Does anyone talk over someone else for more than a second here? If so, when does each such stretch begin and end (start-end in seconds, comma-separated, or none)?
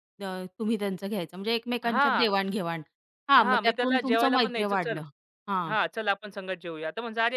3.4-5.0